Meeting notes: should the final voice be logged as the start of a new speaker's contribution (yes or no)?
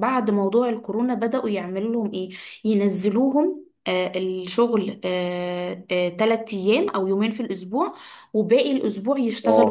no